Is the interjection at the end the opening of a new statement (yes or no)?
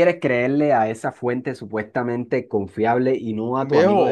yes